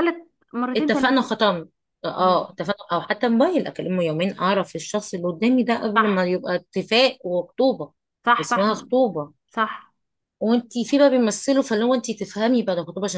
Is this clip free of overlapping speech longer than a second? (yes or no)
yes